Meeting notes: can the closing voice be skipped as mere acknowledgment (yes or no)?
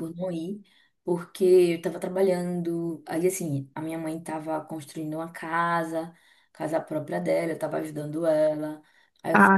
no